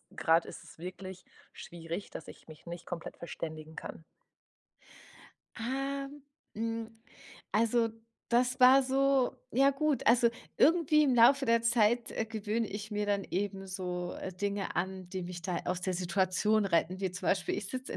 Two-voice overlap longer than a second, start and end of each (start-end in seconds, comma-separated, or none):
none